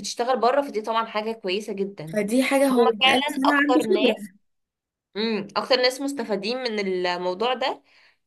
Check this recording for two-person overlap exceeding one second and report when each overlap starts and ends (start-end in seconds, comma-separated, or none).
2.7-4.2